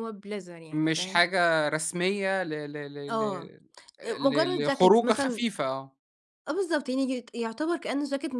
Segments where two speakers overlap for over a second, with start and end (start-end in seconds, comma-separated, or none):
4.2-5.4